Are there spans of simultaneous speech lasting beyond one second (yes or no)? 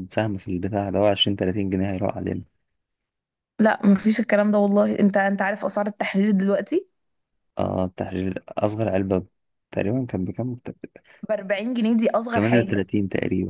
no